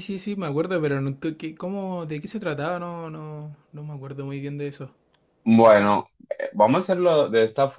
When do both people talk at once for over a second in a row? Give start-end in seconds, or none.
none